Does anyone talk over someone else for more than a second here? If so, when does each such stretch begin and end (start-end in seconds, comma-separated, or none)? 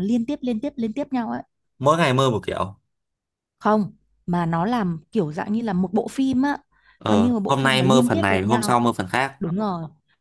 7.1-8.8